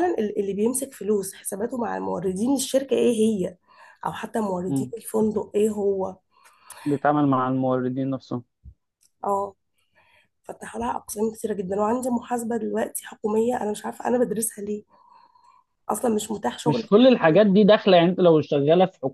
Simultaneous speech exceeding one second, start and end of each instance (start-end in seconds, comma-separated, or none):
none